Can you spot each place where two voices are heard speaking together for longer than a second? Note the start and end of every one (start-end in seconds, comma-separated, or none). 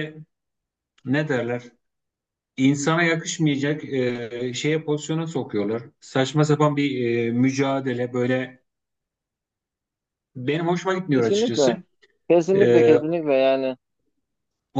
none